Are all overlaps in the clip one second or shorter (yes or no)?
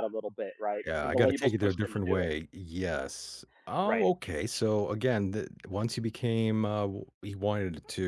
no